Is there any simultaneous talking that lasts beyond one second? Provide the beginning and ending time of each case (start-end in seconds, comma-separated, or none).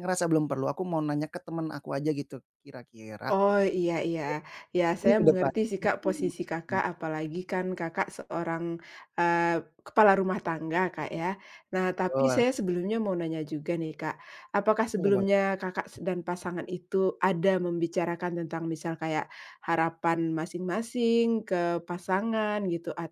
5.0-6.8